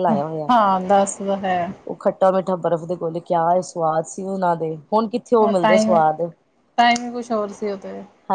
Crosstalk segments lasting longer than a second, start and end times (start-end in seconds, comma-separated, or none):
none